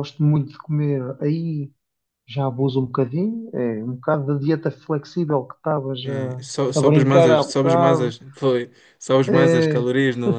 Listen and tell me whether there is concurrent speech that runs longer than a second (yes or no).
yes